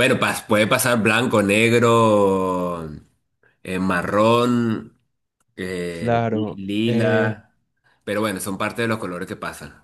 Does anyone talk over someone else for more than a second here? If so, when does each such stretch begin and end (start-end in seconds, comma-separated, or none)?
5.9-7.4